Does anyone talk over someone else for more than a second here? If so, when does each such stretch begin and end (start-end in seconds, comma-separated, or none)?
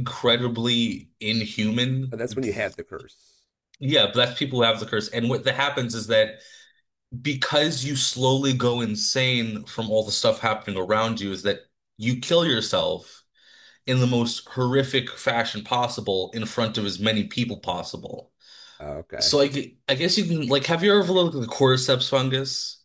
none